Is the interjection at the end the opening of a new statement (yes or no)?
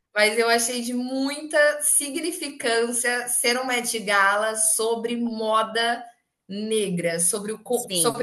no